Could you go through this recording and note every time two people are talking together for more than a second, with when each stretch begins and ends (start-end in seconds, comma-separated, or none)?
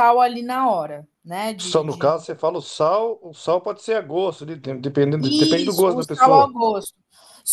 5.2-6.6